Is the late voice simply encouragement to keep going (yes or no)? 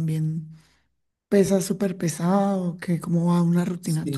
no